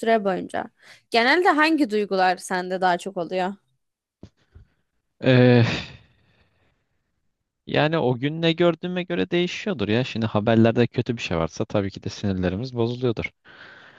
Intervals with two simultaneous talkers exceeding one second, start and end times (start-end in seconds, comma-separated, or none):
none